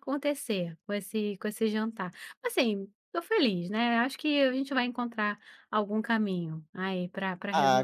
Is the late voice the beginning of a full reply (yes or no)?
yes